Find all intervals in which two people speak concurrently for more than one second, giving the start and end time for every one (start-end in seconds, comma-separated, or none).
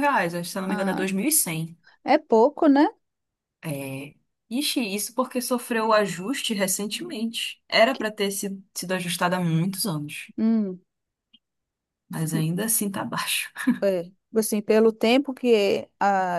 none